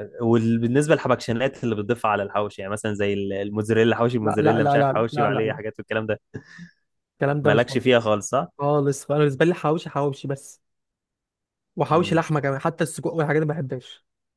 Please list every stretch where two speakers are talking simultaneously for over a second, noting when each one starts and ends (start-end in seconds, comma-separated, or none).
4.2-5.6